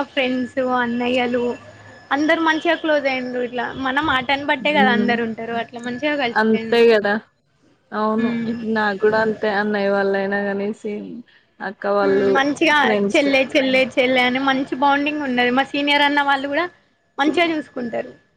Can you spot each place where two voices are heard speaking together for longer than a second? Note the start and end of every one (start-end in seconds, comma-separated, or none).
none